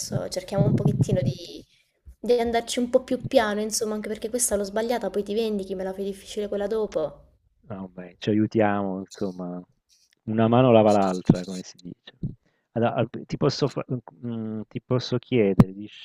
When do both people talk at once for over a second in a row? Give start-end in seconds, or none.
none